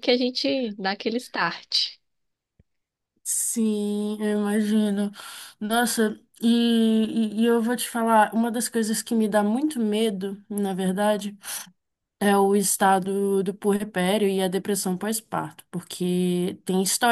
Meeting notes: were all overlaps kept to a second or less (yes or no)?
yes